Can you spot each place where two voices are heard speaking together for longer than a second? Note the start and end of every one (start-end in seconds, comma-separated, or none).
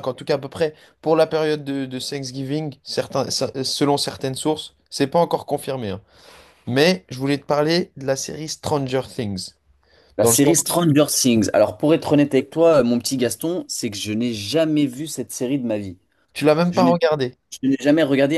none